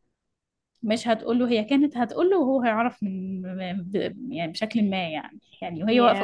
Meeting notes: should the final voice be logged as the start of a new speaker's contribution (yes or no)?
no